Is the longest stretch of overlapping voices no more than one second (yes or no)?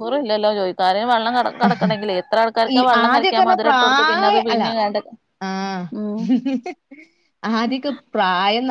no